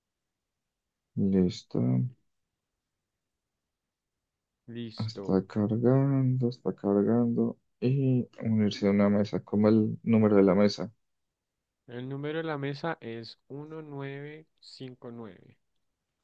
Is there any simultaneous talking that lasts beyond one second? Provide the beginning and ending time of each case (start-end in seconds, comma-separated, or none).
none